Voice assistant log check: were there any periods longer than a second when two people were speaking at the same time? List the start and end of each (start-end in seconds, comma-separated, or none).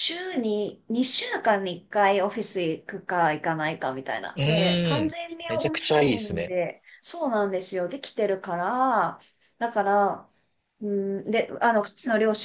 4.3-6.5